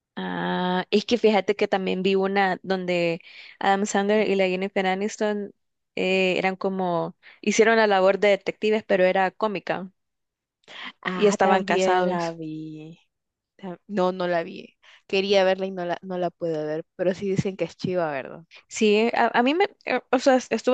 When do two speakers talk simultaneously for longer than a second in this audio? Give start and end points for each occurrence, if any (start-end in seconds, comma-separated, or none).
11.1-12.4